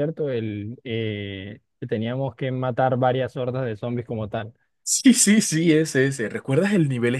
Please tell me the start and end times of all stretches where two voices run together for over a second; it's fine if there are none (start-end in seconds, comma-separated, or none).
none